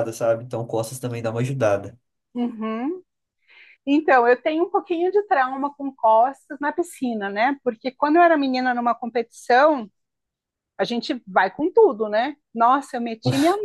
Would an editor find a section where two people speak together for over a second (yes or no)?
no